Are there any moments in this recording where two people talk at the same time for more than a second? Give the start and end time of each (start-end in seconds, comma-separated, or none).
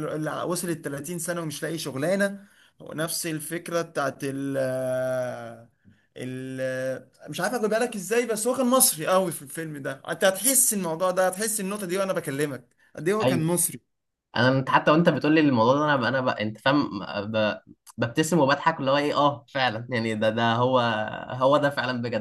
none